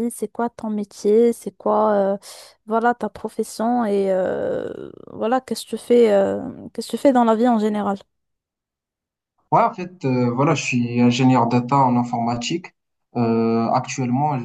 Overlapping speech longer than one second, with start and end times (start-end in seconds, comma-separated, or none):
none